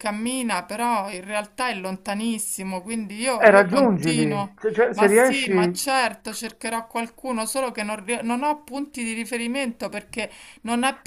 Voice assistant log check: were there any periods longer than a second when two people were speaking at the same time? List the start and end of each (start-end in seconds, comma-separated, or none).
3.4-5.8